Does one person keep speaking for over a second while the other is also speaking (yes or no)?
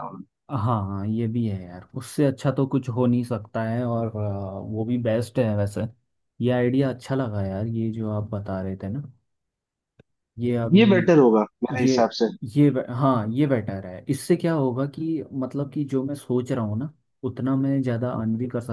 no